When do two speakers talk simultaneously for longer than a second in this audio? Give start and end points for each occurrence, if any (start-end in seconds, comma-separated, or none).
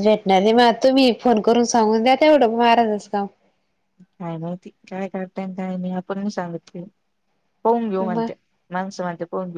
none